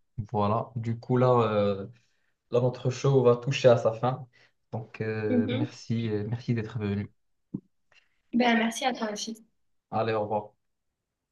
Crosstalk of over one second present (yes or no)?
no